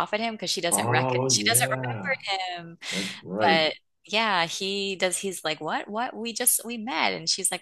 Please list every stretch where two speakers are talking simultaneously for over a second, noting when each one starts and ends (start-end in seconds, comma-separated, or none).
0.7-2.2